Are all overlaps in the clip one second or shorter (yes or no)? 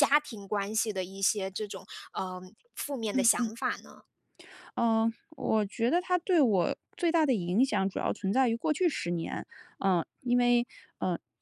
yes